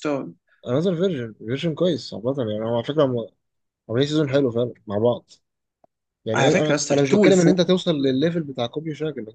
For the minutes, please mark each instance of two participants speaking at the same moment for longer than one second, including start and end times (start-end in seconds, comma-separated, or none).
6.3-7.7